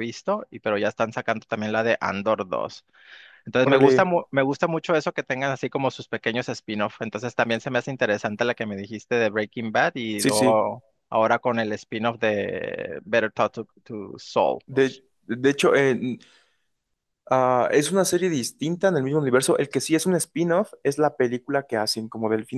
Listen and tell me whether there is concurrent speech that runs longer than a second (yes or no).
no